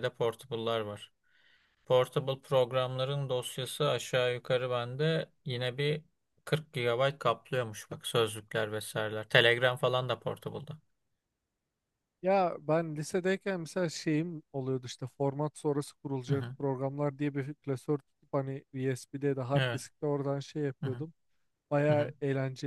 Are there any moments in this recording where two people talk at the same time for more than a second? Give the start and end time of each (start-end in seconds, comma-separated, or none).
none